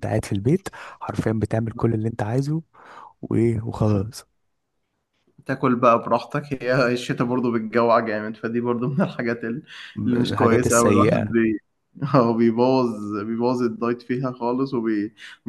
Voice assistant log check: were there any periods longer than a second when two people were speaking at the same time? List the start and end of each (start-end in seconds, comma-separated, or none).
10.0-11.3